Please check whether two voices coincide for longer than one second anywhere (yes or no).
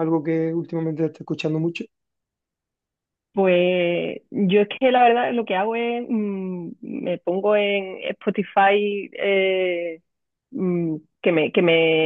no